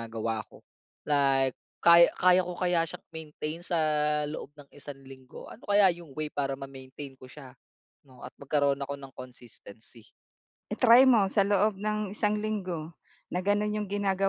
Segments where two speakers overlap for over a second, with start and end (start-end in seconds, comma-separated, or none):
none